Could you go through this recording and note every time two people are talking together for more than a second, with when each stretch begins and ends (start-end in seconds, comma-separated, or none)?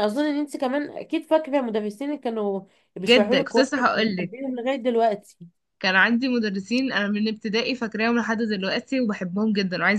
3.1-4.3